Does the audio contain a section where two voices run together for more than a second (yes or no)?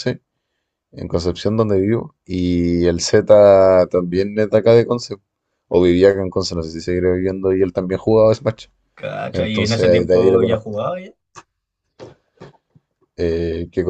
yes